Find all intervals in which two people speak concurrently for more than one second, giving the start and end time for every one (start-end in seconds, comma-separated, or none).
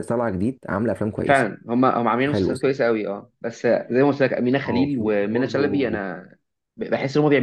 4.7-6.0